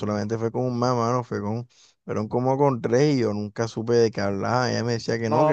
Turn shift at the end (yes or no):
no